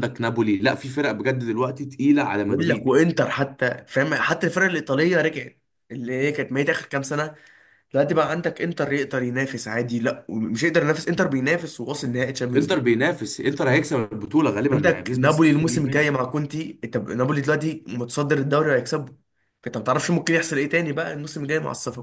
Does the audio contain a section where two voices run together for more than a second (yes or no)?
yes